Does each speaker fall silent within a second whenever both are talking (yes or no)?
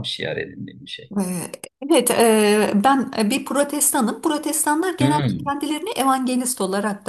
yes